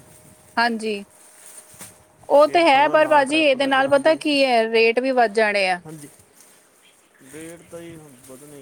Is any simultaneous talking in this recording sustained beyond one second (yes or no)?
yes